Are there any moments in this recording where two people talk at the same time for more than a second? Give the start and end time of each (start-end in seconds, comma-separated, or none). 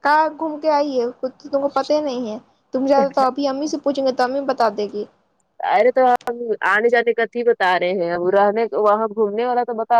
none